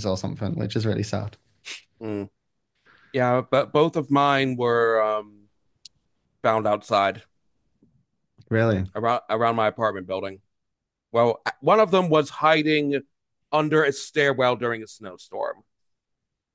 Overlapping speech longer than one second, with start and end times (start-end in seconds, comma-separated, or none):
none